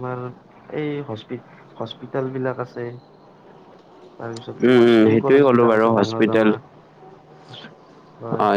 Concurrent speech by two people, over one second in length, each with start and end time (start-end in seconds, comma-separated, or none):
4.7-6.5